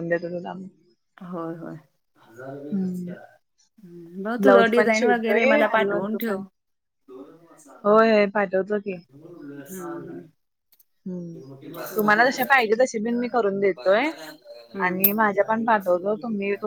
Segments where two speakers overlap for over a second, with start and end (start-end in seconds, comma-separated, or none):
4.4-6.4